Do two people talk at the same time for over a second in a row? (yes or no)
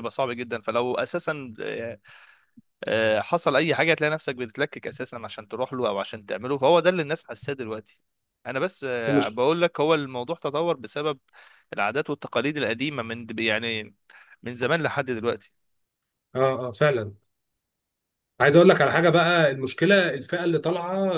no